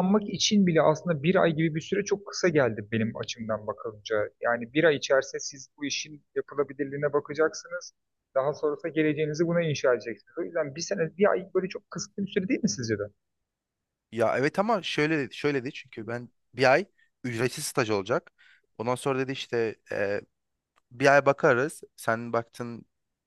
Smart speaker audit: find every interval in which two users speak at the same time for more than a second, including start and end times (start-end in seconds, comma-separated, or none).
none